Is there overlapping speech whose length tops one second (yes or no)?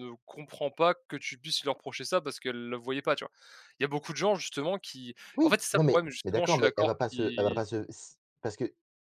yes